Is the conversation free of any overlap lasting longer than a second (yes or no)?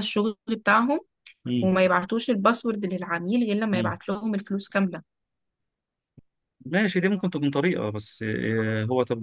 yes